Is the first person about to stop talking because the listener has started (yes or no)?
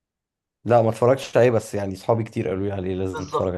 yes